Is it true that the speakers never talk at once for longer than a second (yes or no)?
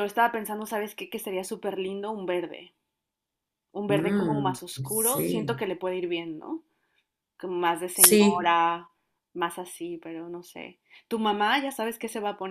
no